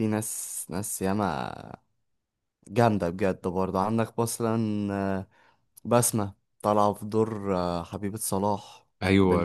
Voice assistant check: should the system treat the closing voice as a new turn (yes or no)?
yes